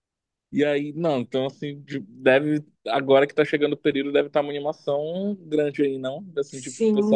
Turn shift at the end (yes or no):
yes